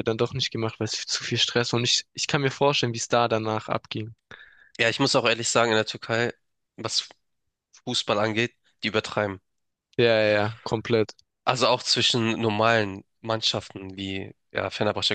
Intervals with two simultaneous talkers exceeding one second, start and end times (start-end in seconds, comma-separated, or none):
none